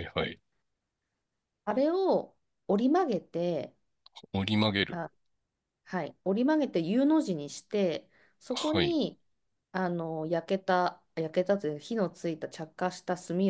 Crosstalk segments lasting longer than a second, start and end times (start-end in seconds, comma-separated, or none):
none